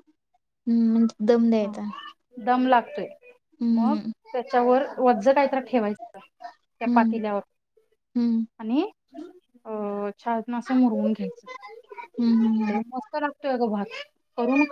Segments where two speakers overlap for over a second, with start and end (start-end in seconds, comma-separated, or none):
none